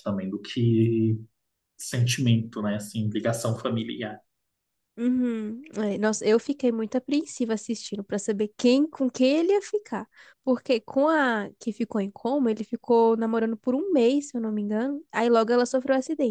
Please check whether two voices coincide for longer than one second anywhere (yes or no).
no